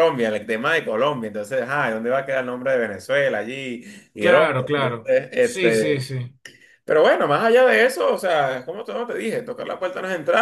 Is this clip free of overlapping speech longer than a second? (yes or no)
no